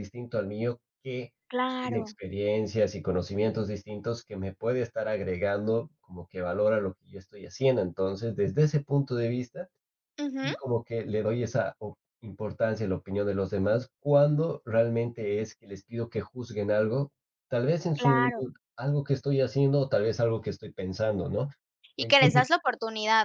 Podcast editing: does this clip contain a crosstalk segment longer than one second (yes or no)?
no